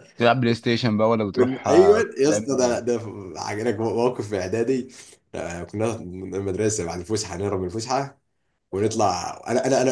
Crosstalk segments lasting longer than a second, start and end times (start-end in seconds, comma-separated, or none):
1.4-2.9